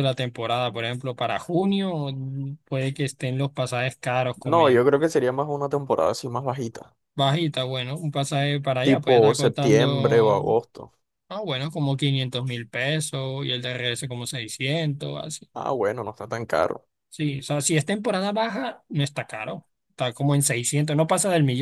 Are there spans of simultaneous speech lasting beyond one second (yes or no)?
yes